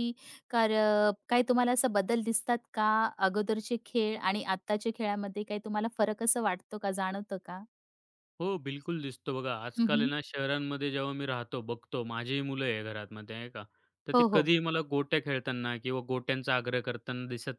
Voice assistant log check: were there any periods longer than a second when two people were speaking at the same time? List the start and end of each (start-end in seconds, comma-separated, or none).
none